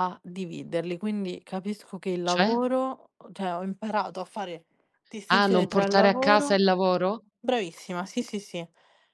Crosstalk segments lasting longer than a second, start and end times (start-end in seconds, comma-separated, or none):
5.3-6.6